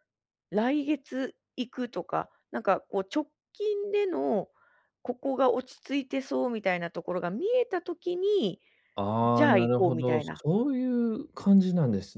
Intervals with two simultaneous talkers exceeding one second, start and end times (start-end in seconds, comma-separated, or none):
9.2-10.4